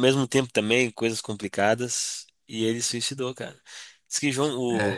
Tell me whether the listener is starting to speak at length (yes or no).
no